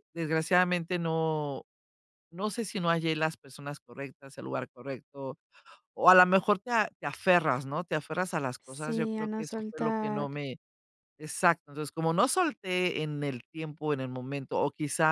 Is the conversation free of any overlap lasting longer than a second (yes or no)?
no